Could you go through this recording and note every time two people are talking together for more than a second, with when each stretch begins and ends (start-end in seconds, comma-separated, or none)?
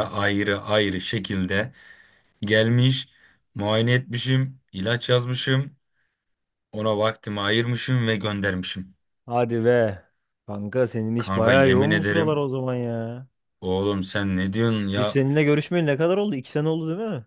11.2-12.4